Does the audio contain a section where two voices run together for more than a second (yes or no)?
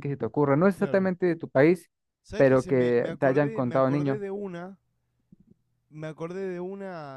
yes